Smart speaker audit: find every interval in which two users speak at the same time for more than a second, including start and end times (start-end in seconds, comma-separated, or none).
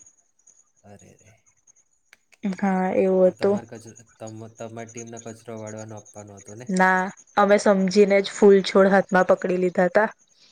none